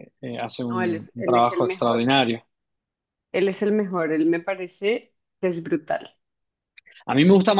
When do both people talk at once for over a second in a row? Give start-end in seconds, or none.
0.7-2.0